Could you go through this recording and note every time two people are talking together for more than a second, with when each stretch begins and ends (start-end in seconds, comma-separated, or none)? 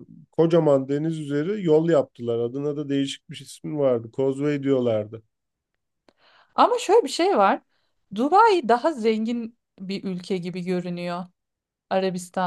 none